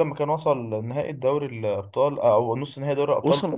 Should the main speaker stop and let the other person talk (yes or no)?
yes